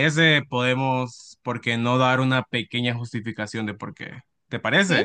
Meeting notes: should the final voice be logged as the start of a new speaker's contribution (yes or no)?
yes